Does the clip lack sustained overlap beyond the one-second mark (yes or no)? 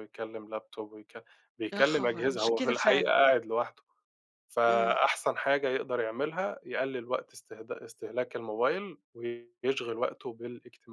no